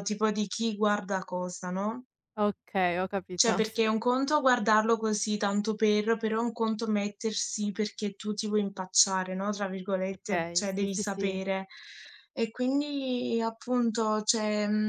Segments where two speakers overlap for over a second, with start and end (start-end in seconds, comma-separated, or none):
10.1-11.4